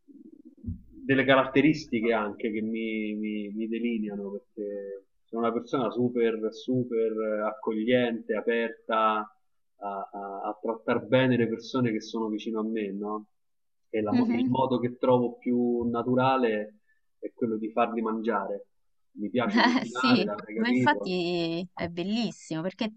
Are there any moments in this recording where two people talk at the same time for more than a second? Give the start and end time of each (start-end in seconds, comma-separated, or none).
19.4-21.1